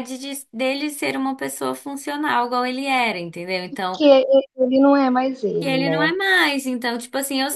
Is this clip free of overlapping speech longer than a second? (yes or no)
yes